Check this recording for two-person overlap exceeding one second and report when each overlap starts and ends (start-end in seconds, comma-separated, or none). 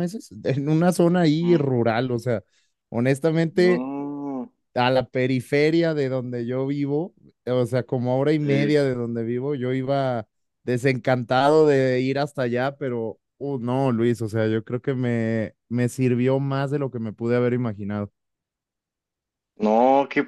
none